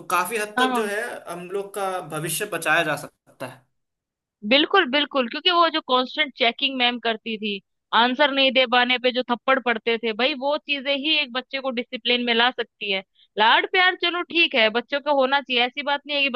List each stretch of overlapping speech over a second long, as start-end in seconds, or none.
none